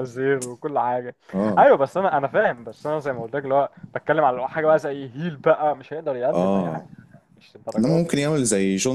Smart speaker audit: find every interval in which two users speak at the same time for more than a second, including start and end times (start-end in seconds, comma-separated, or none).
none